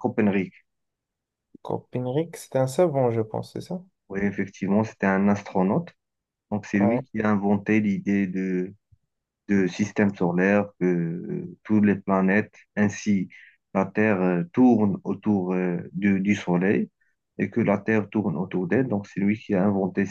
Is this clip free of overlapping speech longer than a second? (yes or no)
yes